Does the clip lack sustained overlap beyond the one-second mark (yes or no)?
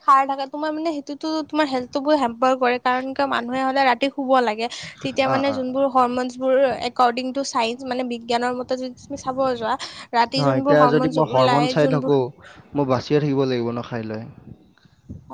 no